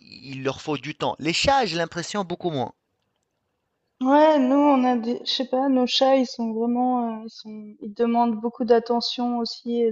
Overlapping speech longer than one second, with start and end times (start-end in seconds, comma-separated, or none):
none